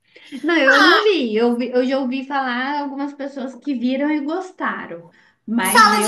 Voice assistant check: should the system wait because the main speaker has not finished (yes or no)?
no